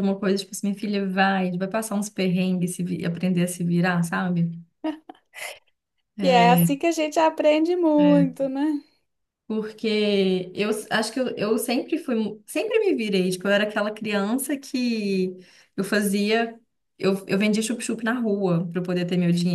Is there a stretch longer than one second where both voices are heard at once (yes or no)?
no